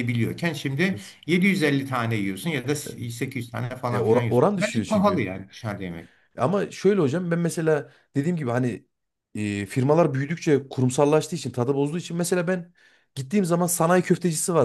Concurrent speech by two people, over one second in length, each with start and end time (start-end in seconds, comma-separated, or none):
3.9-5.2